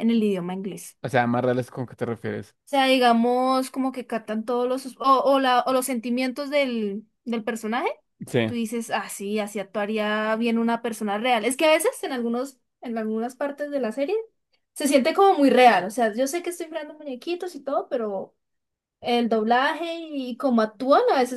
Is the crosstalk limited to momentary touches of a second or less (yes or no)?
yes